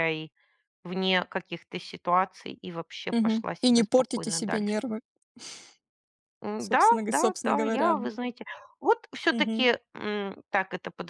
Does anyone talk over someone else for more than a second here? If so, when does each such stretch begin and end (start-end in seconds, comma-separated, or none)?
3.1-4.8, 6.6-8.0